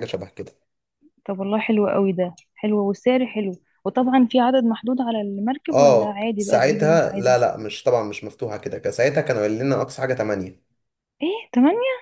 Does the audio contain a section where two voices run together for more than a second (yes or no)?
yes